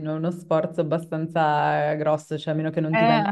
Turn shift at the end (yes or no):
no